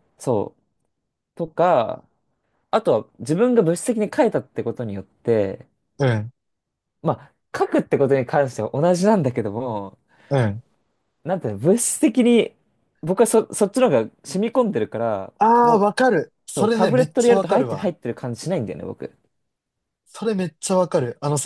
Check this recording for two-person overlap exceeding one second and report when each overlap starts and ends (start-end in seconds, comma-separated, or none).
16.6-17.9